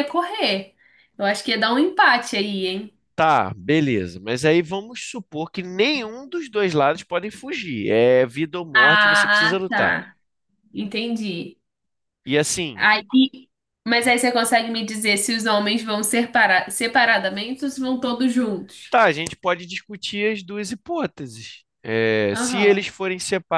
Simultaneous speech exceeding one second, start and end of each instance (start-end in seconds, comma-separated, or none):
8.7-10.0